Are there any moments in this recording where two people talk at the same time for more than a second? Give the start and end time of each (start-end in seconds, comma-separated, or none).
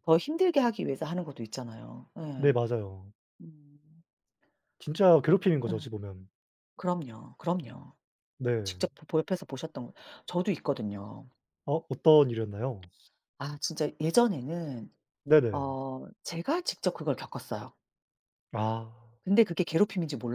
none